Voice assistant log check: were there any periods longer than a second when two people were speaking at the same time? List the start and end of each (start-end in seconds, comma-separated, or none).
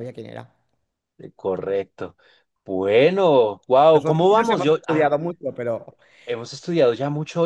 3.9-5.1